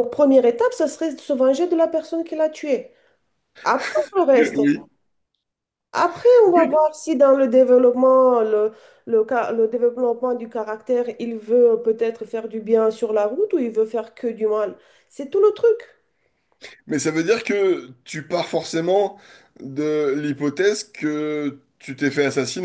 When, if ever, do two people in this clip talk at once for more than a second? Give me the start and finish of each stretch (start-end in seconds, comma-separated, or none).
none